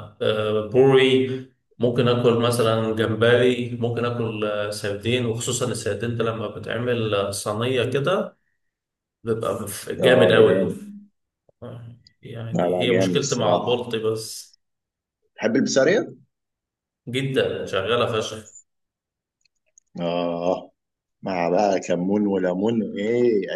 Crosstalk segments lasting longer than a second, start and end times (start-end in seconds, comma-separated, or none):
12.5-13.8